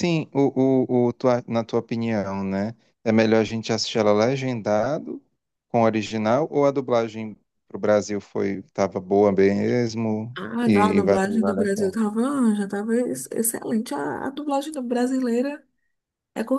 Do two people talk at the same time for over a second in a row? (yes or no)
yes